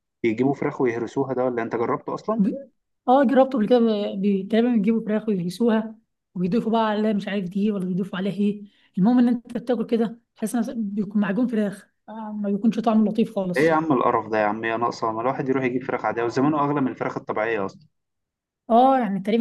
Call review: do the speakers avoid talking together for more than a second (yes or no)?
yes